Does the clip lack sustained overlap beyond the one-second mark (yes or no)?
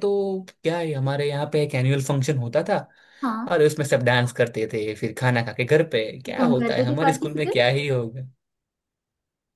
no